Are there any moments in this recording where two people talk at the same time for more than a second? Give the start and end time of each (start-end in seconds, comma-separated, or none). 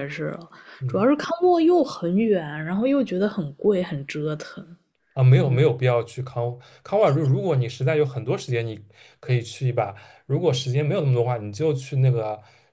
none